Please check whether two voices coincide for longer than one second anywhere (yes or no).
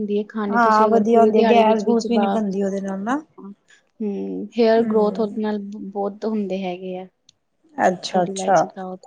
yes